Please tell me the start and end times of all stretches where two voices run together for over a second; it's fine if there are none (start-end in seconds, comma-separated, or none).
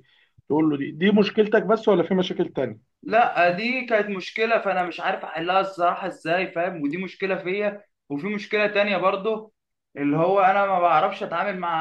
none